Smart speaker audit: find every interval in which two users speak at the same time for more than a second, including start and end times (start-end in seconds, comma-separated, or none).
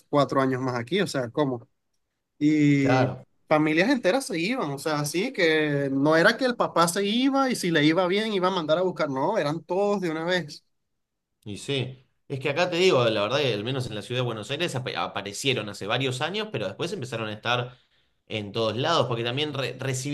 none